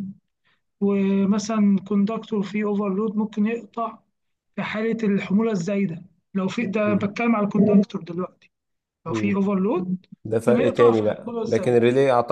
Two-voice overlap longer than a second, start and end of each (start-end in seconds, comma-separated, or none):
10.5-11.8